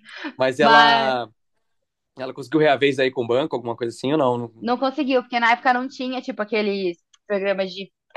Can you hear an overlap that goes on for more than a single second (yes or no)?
no